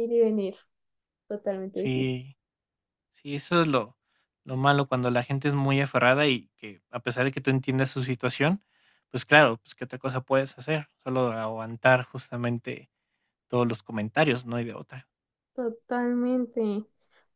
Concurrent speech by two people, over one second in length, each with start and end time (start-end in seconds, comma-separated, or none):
none